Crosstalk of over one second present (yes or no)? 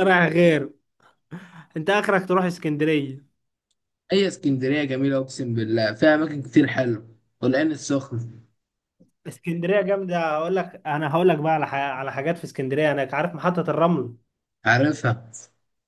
no